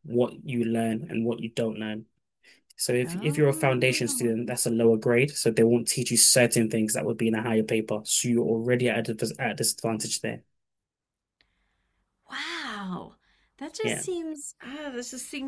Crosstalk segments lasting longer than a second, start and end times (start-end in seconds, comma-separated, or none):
3.0-4.4